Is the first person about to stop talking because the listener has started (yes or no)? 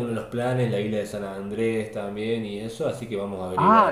yes